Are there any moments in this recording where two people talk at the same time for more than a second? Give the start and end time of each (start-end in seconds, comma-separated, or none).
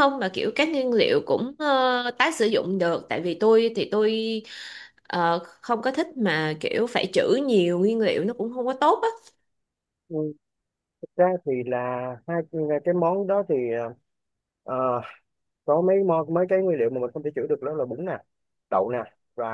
none